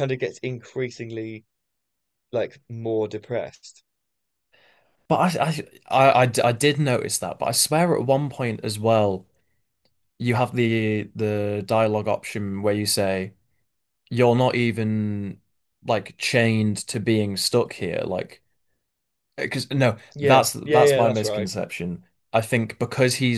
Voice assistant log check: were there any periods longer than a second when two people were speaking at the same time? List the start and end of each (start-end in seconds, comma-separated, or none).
20.1-21.5